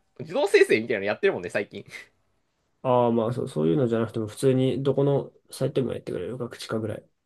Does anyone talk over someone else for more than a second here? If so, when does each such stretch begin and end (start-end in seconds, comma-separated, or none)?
none